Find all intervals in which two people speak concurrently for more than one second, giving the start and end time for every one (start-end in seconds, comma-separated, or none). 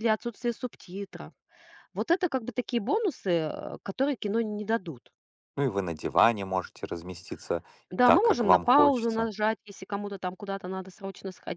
7.9-9.3